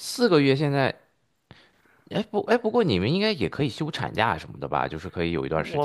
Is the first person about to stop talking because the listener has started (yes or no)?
yes